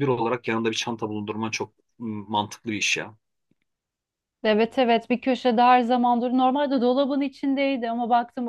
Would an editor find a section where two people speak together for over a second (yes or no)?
no